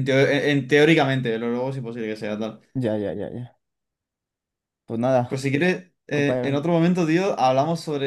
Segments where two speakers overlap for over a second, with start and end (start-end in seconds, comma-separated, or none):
none